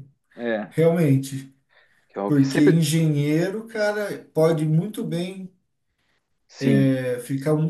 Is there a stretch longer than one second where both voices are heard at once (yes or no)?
no